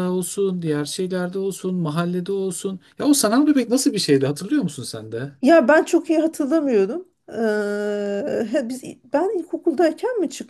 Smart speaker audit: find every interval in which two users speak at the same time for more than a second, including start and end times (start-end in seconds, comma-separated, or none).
none